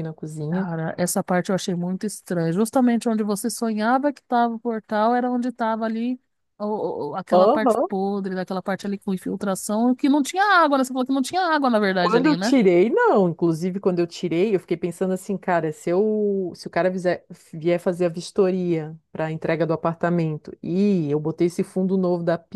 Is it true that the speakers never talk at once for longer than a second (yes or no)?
yes